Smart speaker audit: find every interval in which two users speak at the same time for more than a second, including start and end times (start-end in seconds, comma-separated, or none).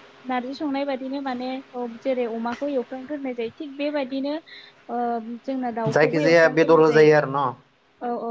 5.9-7.4